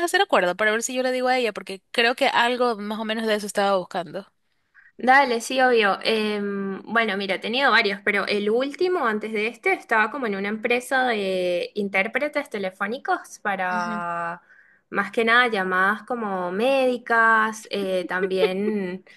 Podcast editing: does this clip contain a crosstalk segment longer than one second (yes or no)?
no